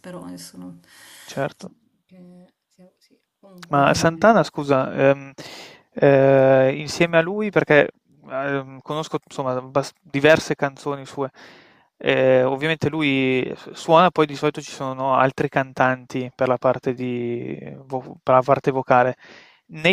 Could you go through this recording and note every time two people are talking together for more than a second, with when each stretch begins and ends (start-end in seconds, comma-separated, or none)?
none